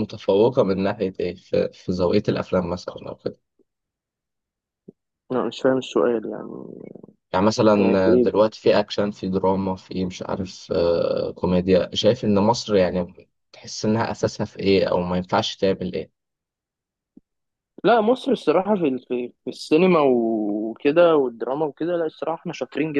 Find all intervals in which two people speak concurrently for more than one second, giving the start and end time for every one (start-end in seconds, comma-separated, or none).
none